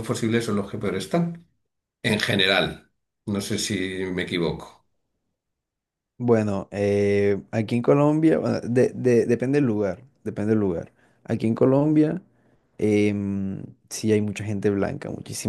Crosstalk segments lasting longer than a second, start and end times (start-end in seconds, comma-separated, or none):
none